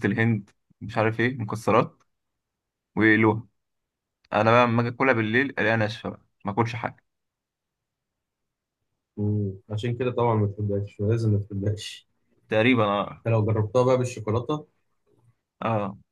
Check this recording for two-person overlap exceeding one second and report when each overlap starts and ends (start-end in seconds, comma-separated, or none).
none